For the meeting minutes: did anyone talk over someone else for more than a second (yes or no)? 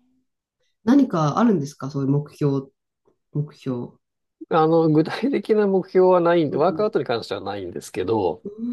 no